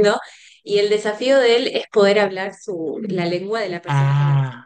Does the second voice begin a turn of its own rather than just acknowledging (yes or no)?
no